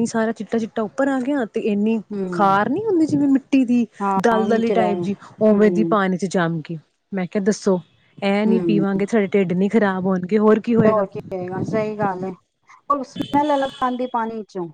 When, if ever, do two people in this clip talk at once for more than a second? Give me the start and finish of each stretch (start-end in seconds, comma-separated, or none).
4.2-5.9